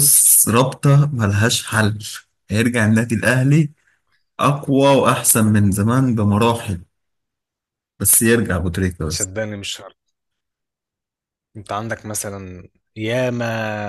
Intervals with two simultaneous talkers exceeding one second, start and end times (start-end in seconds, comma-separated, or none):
none